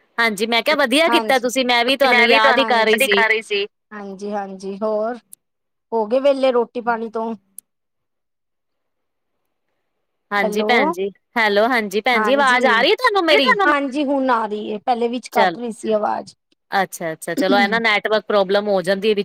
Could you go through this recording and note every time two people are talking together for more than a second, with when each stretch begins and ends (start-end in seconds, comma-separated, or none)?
none